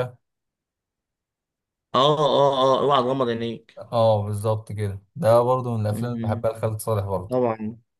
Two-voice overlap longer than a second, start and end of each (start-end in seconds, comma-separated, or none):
none